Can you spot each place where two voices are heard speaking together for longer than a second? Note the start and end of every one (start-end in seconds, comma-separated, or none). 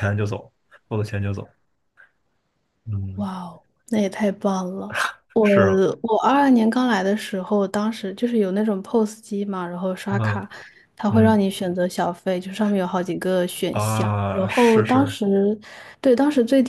13.7-15.2